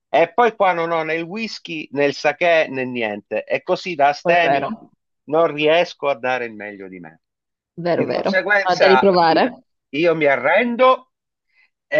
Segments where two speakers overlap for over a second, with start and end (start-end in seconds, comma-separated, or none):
7.9-9.5